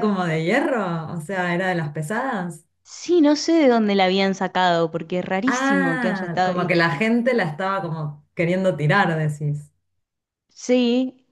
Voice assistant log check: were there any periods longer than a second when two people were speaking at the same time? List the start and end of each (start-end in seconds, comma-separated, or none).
5.5-6.7